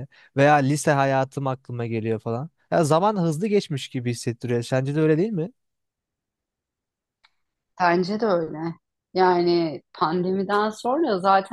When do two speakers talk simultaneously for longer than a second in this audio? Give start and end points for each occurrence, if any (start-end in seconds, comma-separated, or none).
none